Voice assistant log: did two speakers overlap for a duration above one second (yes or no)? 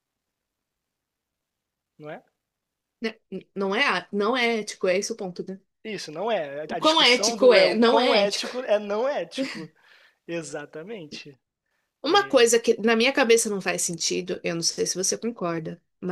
yes